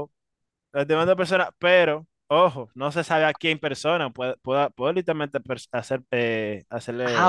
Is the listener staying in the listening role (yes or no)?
no